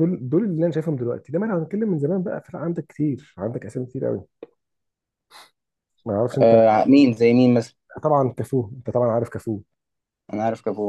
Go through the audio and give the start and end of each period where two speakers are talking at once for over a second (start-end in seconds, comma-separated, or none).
none